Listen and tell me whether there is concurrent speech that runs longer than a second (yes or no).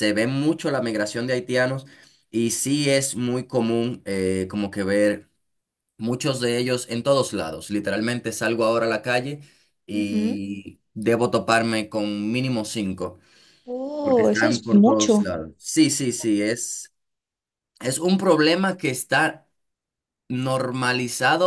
yes